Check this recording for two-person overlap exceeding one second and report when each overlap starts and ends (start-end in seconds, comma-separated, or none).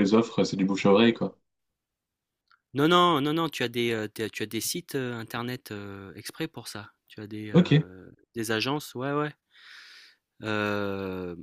none